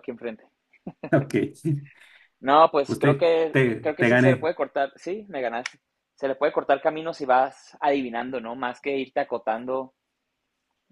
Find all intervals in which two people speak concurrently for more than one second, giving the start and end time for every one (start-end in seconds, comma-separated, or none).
2.9-4.5